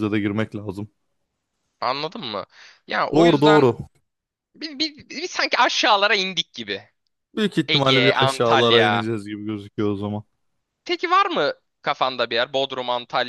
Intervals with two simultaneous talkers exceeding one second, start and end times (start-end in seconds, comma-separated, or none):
7.7-9.1